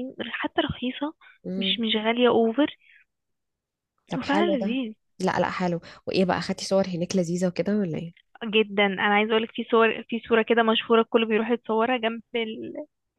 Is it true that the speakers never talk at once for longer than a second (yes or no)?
yes